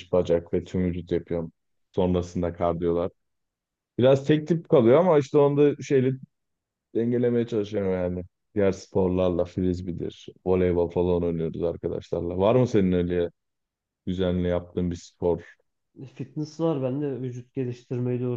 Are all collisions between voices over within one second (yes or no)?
yes